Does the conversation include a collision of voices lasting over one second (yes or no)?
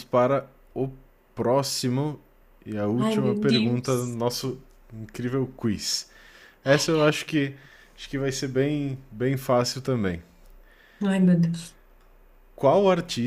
yes